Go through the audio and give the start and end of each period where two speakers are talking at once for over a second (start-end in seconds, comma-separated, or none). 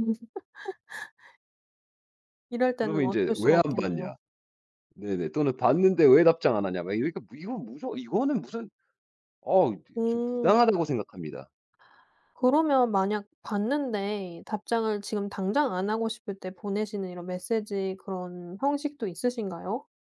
2.7-4.1